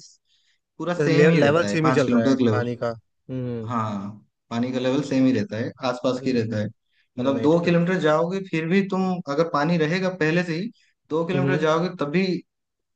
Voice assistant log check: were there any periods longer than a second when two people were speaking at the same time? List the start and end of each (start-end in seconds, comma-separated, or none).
0.9-2.4